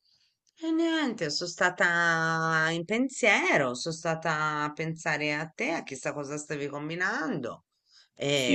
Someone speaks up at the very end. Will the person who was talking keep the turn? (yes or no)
no